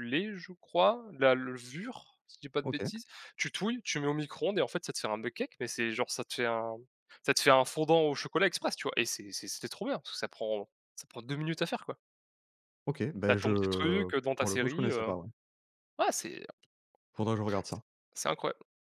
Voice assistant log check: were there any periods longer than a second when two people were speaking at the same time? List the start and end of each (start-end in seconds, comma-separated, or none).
13.2-15.1